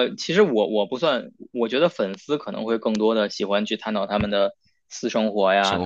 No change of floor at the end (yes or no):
yes